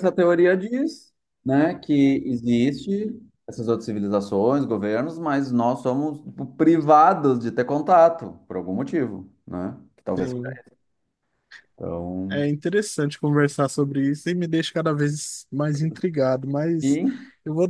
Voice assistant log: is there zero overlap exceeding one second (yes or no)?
yes